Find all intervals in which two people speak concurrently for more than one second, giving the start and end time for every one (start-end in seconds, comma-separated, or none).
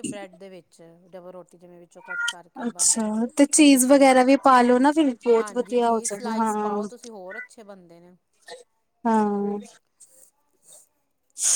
5.4-6.8